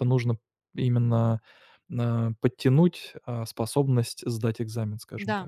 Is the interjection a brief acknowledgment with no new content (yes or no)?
no